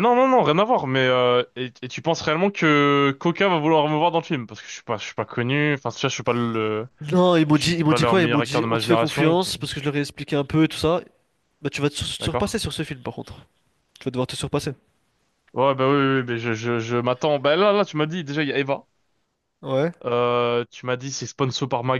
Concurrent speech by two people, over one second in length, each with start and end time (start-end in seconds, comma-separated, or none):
7.5-9.4